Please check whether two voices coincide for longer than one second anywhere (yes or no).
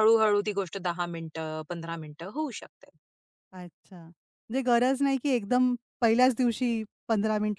no